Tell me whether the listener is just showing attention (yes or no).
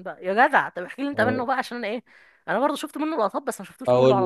no